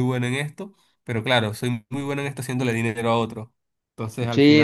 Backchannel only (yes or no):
no